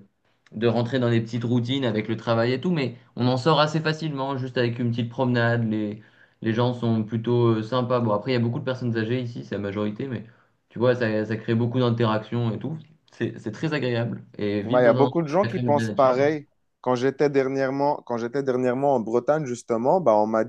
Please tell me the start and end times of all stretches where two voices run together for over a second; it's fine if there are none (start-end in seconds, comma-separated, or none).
14.6-16.3